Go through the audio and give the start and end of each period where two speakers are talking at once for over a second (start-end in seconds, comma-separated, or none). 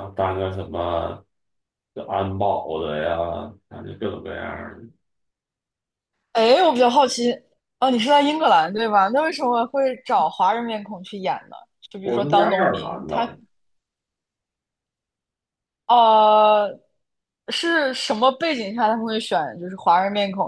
12.0-13.3